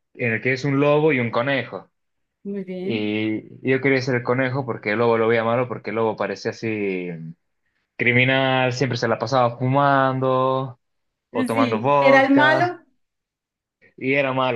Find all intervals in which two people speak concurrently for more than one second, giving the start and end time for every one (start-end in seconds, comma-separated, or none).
11.5-12.8